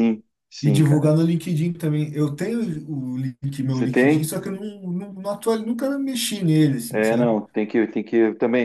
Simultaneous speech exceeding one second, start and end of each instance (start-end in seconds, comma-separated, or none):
none